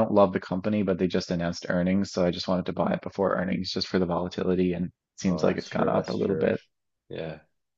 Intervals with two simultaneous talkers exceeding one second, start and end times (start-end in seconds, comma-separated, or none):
5.3-6.5